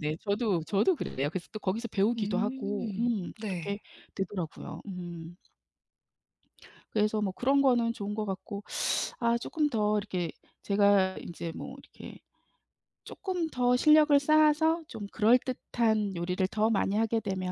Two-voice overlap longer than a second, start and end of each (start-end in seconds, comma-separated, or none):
2.2-3.8